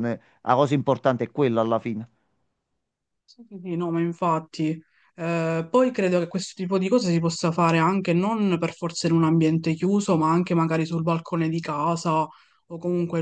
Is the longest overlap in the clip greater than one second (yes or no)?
no